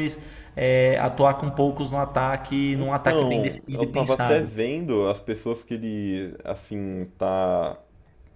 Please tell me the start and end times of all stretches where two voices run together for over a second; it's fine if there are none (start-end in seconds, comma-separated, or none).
2.7-4.5